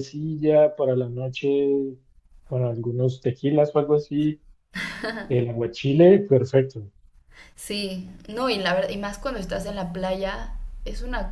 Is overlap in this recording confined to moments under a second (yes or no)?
yes